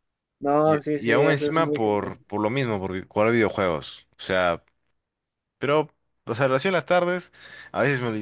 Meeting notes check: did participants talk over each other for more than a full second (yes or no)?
yes